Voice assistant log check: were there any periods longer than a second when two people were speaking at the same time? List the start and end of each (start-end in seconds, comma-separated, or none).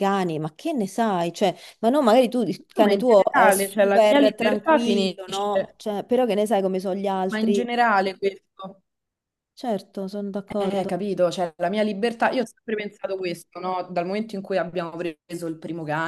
2.8-5.8